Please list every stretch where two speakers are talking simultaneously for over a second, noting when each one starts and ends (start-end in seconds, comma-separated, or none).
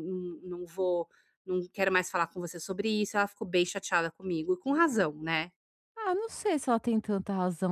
none